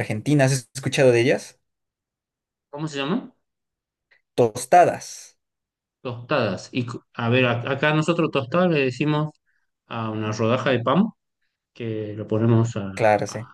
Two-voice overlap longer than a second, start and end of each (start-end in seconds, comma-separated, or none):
none